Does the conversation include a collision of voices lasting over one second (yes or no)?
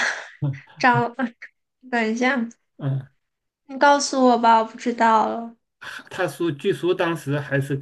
no